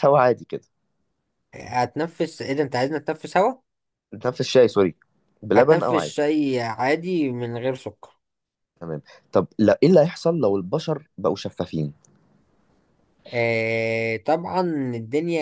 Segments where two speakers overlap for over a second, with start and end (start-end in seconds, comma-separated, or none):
none